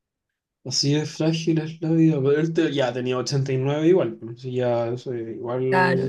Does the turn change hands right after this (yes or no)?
yes